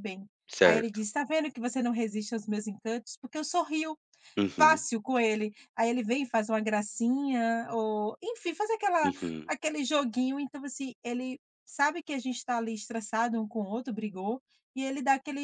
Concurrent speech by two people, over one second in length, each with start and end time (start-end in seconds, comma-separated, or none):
none